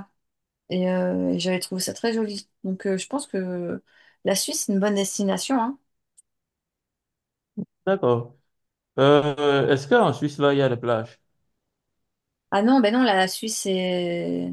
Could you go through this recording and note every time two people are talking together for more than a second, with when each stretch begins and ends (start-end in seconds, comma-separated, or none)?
none